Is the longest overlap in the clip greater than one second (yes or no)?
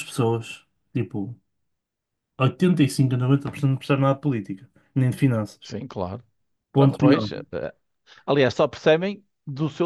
no